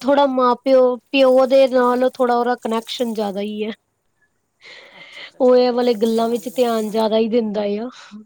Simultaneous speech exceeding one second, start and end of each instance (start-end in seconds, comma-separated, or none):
5.4-7.5